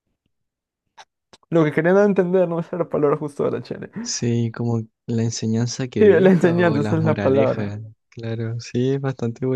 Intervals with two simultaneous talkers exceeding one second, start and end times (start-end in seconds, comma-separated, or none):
6.0-7.8